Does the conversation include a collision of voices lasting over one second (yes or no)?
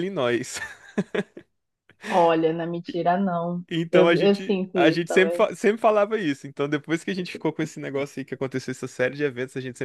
yes